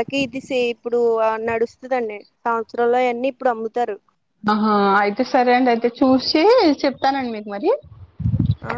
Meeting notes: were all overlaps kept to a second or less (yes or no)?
yes